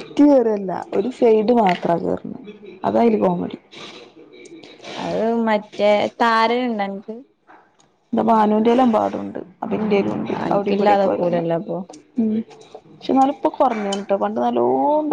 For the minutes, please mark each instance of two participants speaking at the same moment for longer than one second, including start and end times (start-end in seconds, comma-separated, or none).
10.4-11.8